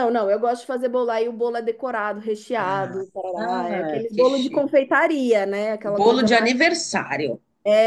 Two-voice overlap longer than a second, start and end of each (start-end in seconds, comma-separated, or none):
2.6-4.7